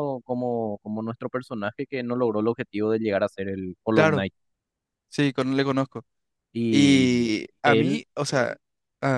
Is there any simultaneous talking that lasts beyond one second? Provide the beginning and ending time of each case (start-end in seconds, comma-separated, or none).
6.7-8.0